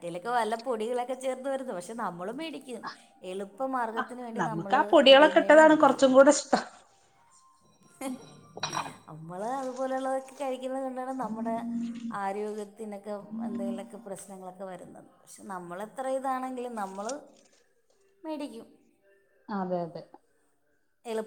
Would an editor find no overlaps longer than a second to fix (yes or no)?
no